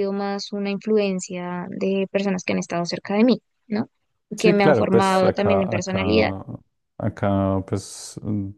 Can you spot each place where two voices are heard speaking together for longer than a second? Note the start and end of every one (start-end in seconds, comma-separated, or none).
4.4-6.3